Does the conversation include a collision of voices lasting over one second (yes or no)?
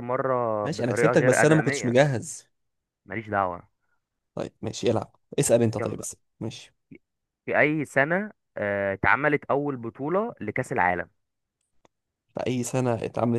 yes